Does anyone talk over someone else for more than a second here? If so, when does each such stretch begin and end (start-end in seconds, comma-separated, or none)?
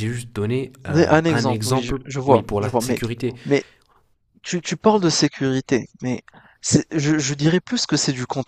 0.9-3.0